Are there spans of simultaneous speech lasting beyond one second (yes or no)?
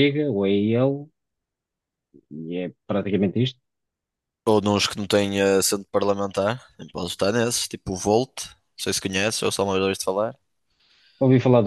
no